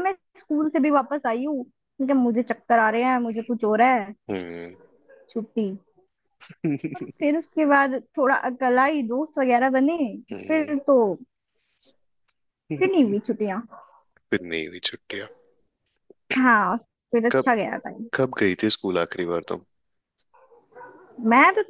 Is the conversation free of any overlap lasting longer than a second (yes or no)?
yes